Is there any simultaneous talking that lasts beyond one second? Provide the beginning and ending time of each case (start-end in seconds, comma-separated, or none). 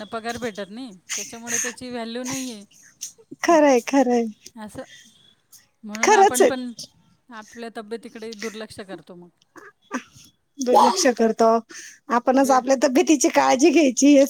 none